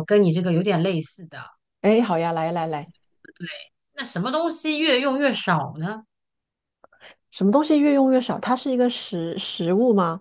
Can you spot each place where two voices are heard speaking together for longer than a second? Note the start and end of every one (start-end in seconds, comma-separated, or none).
none